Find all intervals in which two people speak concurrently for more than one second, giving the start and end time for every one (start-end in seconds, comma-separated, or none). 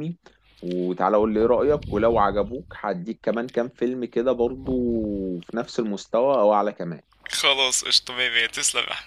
none